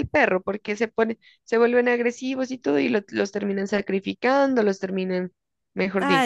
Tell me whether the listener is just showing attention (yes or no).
no